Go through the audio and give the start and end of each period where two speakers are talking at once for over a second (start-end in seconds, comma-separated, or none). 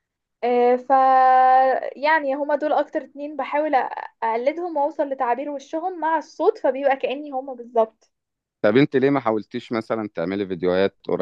none